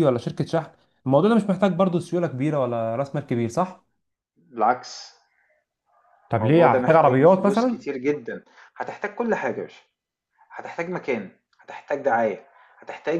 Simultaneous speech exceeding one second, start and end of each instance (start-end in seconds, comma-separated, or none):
6.4-7.8